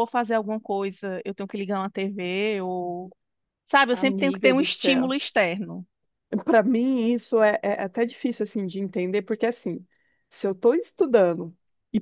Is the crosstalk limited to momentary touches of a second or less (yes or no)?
no